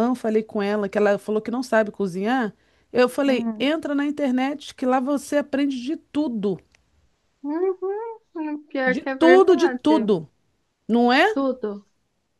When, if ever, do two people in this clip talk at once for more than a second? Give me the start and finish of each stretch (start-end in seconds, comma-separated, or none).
8.9-10.1